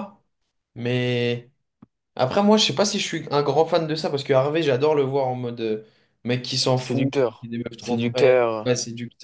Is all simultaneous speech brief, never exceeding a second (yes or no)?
no